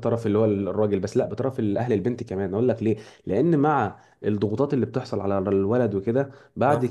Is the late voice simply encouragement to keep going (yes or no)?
yes